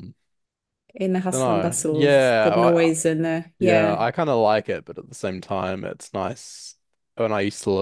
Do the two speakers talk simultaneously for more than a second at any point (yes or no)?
yes